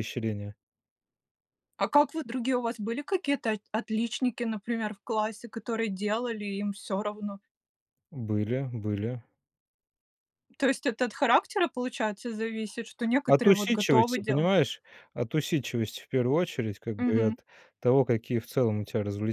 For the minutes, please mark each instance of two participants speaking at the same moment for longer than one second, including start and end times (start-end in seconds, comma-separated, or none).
13.3-14.5